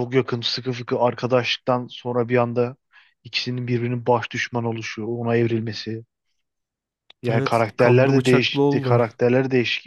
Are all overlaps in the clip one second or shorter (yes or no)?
no